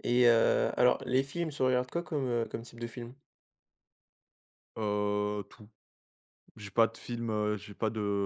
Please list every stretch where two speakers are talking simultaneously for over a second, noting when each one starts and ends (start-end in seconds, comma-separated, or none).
none